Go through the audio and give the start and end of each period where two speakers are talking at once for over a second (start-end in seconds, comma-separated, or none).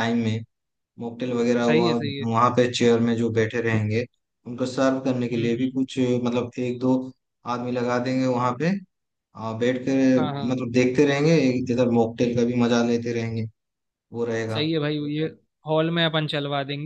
none